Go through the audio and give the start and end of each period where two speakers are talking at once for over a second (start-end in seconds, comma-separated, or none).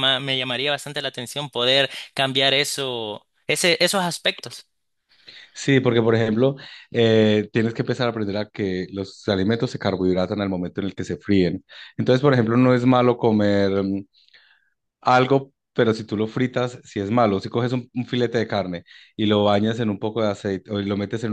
none